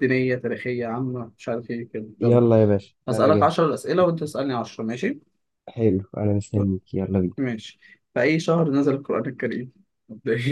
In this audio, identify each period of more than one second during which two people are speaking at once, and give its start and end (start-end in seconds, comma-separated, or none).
none